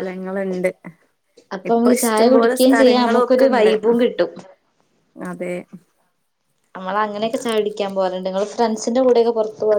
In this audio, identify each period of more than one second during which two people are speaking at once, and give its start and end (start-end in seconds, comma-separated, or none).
1.7-3.7